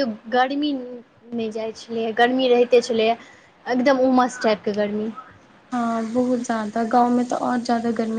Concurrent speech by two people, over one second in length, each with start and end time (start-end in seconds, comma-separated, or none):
none